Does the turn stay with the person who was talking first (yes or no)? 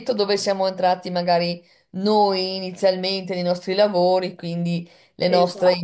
yes